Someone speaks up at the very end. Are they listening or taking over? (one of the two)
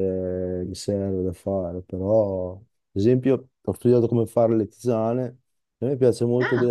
listening